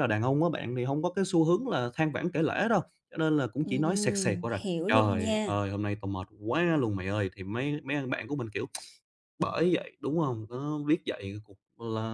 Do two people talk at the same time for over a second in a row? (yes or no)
yes